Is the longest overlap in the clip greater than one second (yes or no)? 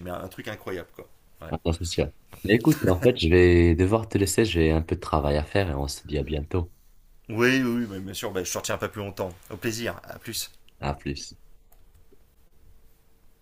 no